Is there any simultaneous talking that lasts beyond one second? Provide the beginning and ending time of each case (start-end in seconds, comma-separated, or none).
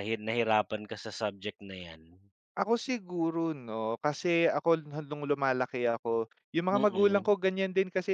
none